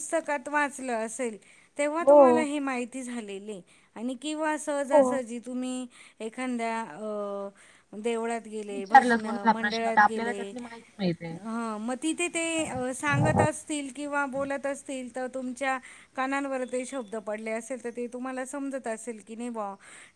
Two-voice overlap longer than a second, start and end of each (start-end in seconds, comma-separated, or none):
8.7-10.5